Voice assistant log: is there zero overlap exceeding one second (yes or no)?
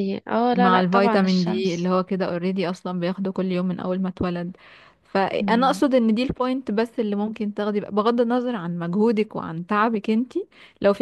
no